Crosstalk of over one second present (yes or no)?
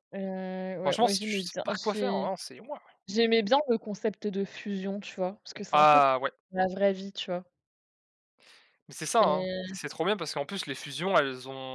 yes